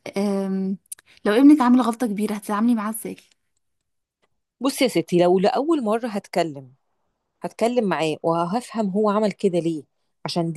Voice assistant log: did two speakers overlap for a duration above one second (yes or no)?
no